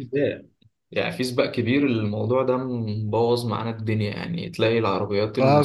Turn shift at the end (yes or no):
yes